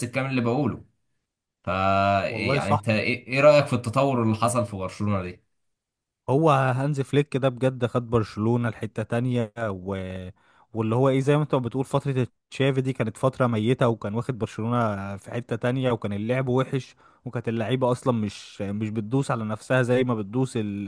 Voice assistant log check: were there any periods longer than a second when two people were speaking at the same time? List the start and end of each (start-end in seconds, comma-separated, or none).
none